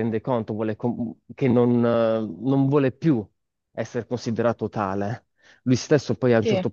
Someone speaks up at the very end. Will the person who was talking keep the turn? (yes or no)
yes